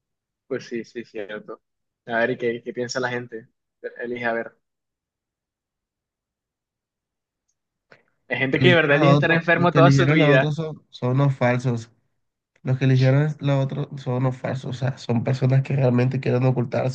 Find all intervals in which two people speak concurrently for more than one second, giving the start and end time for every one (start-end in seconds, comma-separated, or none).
8.5-10.5